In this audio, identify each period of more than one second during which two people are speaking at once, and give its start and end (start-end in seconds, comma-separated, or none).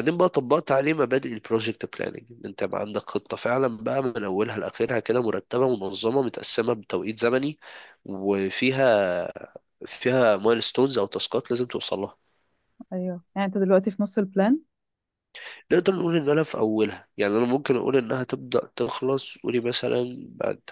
none